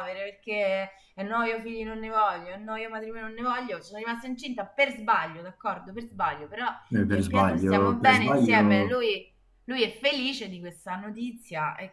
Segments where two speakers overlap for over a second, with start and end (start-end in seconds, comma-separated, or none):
7.1-9.0